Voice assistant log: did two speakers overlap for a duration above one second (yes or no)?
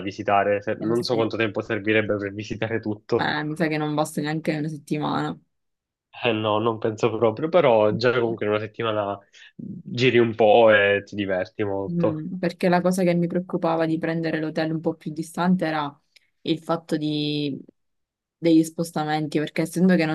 no